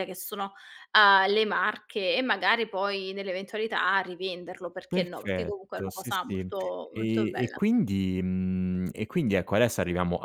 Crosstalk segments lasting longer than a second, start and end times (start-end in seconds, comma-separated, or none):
4.9-6.5